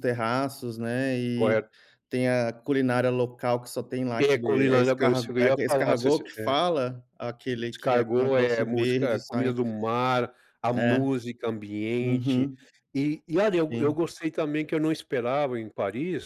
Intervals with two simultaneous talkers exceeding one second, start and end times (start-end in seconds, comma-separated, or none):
4.2-6.5, 7.7-9.5